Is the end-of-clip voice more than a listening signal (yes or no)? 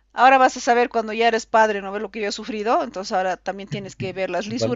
no